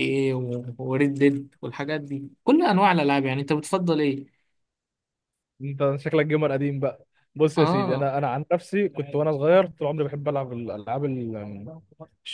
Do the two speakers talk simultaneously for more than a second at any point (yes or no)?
no